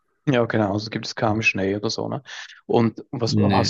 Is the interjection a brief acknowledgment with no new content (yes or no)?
yes